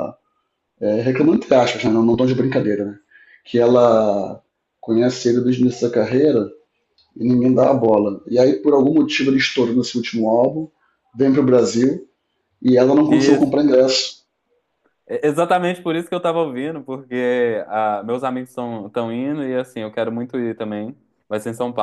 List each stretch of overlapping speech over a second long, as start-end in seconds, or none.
none